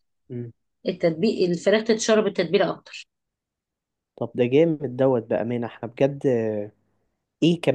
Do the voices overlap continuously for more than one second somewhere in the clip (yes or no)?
no